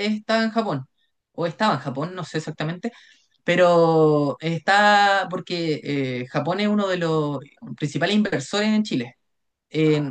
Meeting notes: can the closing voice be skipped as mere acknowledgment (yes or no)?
yes